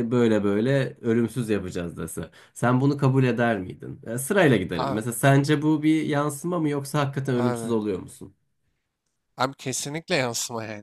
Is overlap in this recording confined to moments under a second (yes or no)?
yes